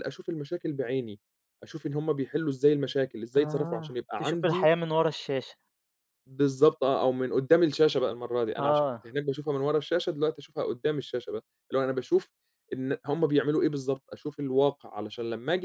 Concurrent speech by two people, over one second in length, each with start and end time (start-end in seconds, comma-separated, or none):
3.4-4.7